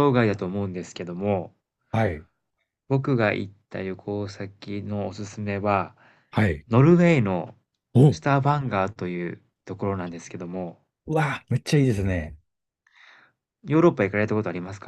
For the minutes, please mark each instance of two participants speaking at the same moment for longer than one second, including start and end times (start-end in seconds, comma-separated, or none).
none